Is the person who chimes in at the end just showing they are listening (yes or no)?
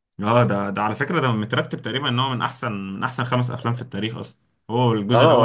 no